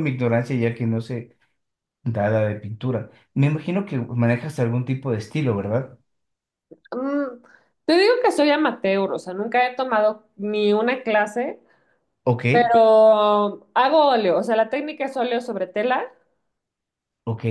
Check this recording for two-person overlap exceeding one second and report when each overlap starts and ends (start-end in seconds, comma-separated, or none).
none